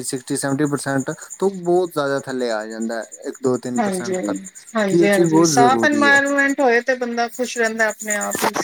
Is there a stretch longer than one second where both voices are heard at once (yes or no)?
yes